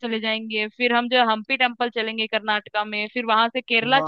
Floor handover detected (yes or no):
no